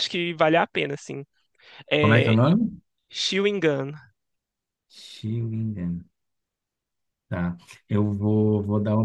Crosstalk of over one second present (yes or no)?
no